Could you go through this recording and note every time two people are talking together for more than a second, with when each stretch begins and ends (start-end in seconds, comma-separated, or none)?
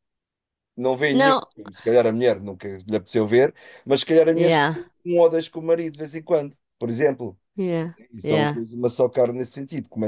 none